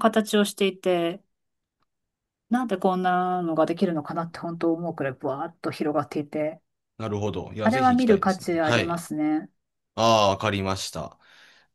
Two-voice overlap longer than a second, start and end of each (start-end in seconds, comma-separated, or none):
7.6-9.0